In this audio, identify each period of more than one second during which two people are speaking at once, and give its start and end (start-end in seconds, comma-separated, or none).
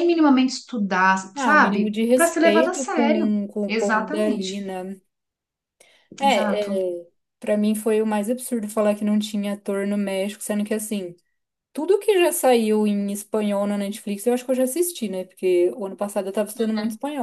1.4-4.7